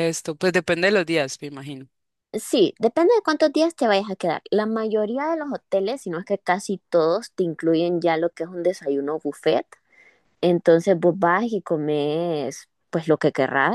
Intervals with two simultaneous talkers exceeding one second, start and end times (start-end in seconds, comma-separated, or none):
none